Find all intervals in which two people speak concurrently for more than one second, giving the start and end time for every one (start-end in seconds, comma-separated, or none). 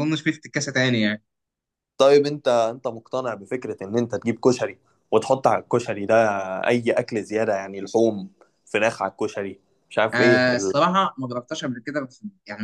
none